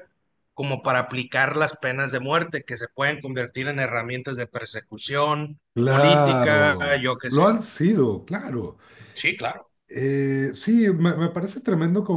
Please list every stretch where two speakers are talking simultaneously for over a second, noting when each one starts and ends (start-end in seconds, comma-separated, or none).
5.7-7.5